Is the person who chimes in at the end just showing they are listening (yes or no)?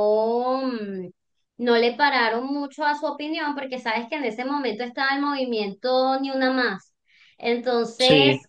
yes